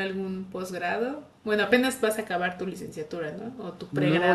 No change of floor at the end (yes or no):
no